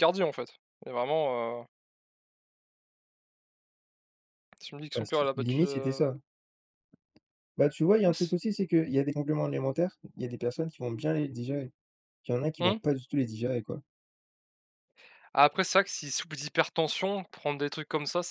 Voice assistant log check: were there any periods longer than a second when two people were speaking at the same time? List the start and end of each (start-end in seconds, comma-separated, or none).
4.9-6.1